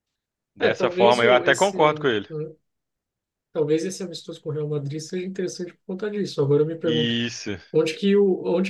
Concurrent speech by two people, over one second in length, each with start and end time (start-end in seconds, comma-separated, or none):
0.6-2.3